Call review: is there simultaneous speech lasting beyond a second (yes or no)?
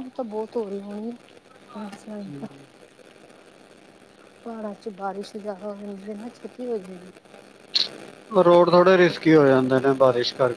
no